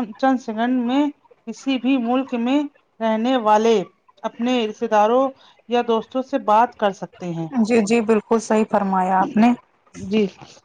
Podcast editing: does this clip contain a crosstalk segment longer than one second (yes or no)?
no